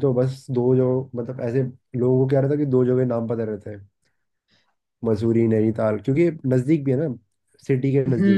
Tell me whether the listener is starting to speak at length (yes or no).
yes